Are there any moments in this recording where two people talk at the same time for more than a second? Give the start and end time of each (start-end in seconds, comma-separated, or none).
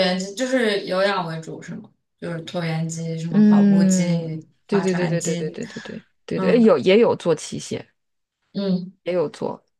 3.3-5.6